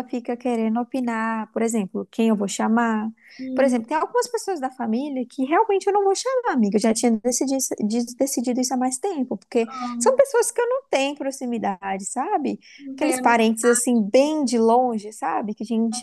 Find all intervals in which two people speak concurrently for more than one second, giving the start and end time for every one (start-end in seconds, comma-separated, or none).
none